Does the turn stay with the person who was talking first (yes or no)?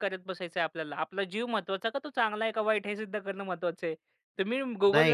no